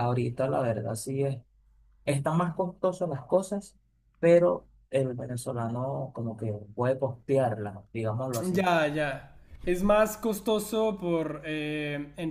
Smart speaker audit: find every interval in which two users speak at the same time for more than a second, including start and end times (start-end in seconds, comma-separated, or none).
none